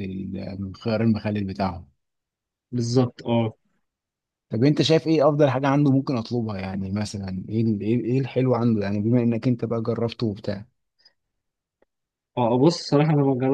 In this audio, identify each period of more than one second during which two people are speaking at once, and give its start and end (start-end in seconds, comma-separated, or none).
none